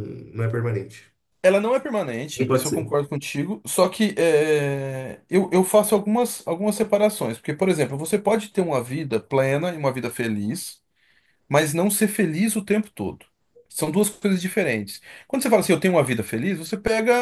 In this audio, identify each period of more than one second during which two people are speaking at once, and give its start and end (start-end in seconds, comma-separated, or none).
none